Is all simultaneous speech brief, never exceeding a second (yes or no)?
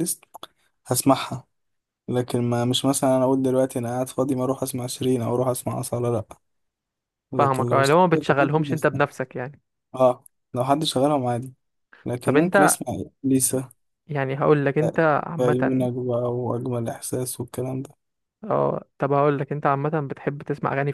no